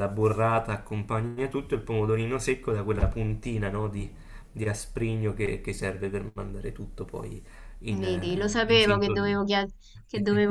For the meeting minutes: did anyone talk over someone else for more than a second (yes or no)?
yes